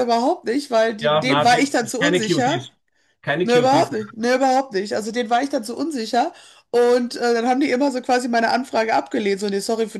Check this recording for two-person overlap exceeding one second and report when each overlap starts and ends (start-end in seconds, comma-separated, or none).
1.0-2.6